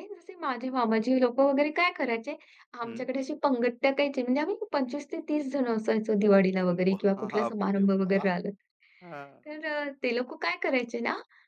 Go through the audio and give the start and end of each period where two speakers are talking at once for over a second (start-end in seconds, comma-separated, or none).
6.9-8.2